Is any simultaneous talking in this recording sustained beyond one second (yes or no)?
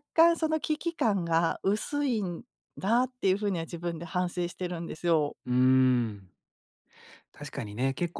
no